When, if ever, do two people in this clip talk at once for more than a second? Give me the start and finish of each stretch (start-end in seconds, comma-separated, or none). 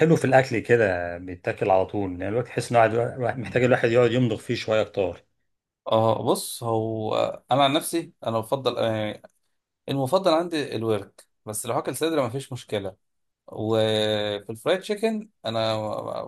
none